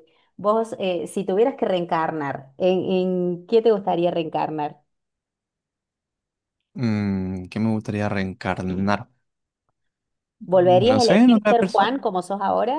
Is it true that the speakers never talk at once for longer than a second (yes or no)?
no